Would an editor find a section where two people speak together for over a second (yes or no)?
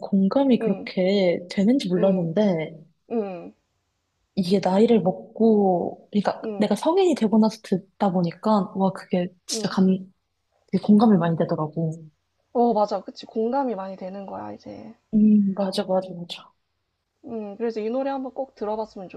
no